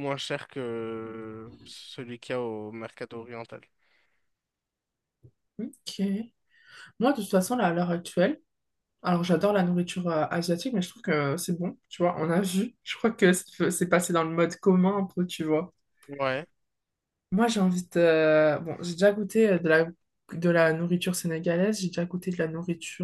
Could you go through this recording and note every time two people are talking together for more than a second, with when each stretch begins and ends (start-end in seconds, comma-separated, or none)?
none